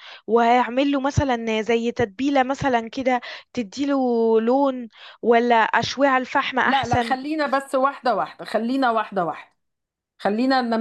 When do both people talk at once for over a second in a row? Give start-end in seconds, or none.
none